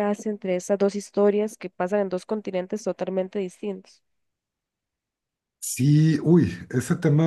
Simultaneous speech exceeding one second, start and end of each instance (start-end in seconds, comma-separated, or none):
none